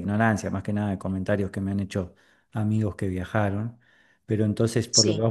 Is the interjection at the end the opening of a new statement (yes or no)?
no